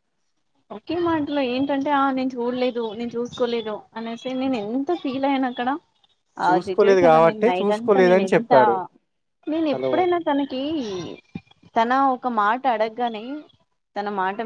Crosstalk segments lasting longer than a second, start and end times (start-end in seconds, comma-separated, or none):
6.5-8.6